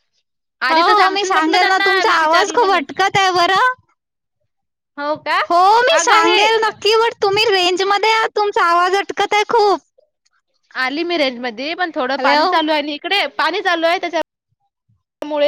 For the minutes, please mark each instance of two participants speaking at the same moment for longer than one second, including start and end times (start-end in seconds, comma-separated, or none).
0.7-2.9